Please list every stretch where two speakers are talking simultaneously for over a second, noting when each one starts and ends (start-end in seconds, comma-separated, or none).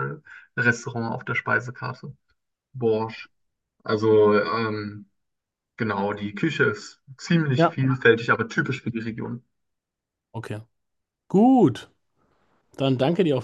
none